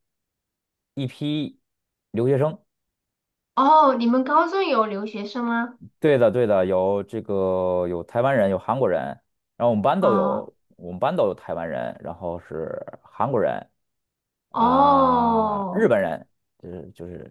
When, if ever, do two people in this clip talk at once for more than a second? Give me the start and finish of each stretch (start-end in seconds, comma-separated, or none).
14.6-15.9